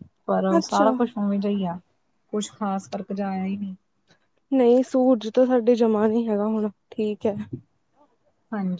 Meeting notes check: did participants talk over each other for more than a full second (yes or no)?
no